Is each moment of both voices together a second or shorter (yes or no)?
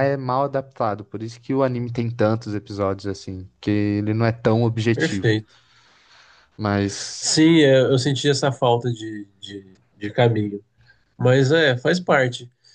yes